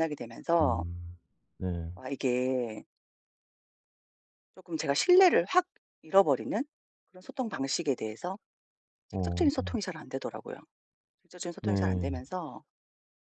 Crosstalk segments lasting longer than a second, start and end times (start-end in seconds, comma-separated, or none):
none